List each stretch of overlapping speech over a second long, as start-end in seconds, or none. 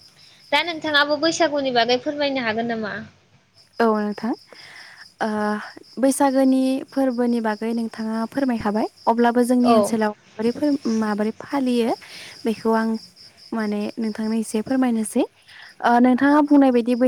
none